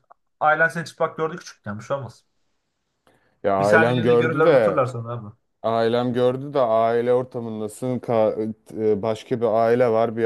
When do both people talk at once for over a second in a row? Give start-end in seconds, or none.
3.6-4.8